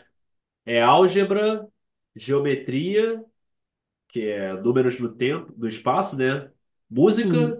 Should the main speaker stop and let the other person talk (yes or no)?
no